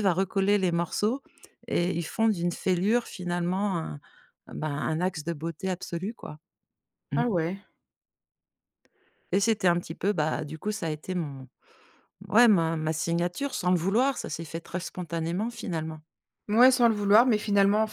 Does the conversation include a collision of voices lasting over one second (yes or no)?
no